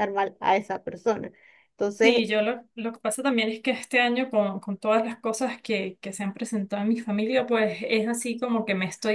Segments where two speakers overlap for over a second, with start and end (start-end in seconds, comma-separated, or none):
none